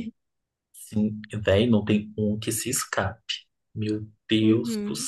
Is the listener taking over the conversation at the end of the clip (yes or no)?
yes